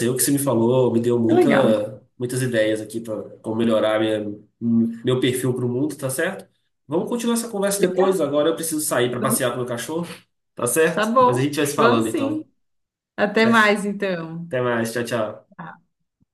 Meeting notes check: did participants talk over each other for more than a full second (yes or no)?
yes